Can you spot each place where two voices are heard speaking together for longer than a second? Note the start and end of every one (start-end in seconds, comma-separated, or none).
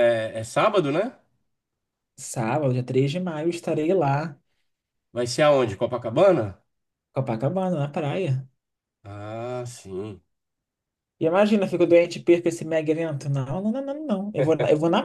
none